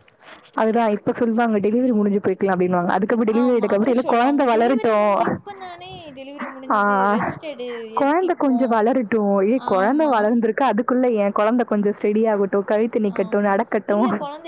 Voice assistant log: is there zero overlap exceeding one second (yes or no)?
no